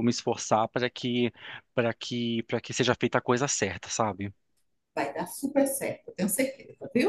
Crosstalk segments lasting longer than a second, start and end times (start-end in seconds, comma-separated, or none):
none